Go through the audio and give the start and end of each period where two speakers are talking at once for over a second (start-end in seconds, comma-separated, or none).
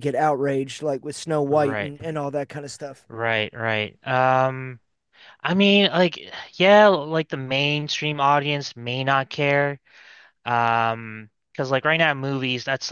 none